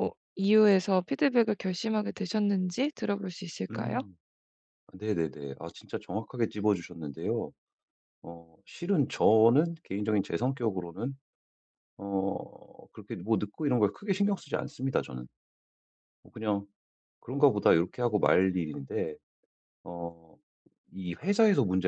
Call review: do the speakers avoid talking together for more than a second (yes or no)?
yes